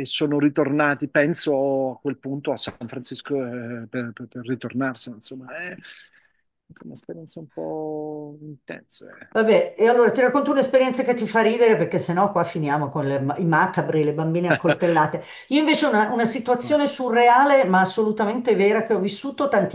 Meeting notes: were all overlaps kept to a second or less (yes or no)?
yes